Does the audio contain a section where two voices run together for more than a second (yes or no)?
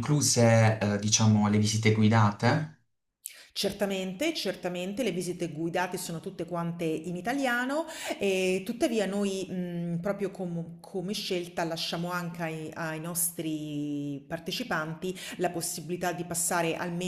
no